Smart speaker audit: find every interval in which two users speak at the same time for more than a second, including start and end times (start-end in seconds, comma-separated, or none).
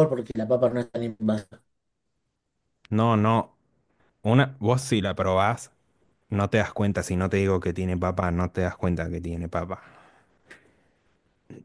none